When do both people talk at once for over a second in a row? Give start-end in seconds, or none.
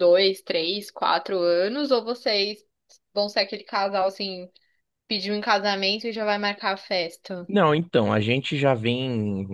none